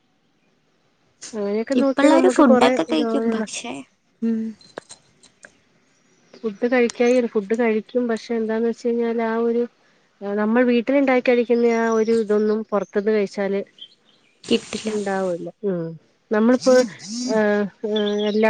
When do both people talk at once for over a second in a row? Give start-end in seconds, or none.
1.8-3.4